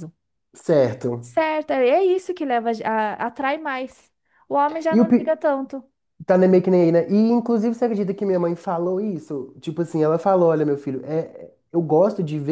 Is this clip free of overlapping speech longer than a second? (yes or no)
yes